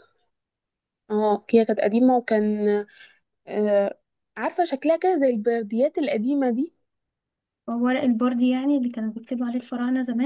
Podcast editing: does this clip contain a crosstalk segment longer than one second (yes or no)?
no